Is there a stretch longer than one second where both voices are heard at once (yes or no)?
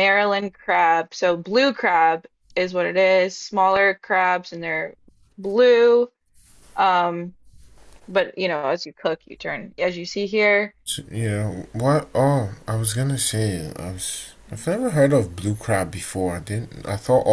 no